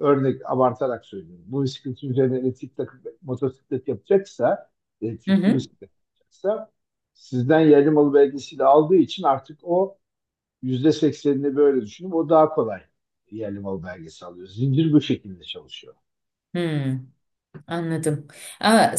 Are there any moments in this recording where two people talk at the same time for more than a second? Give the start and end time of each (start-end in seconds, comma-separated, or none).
none